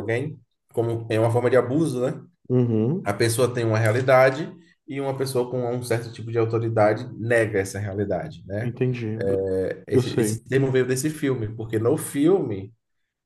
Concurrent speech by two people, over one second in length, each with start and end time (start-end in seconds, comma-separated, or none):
none